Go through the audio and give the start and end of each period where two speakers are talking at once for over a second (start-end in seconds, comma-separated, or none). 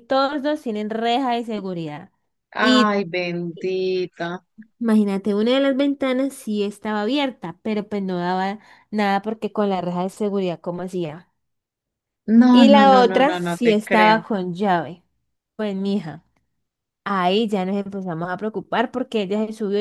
12.5-14.3